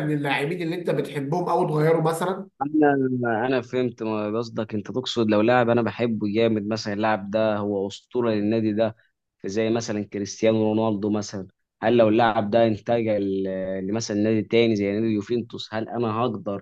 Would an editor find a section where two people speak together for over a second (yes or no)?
no